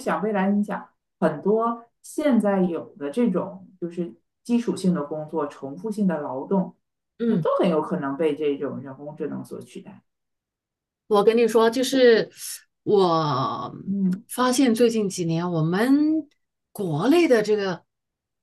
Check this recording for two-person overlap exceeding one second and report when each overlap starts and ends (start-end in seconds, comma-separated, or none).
none